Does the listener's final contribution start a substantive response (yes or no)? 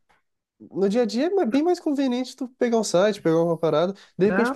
no